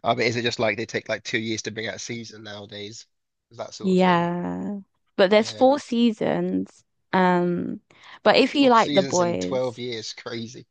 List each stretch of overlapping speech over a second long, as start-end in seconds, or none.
8.6-9.8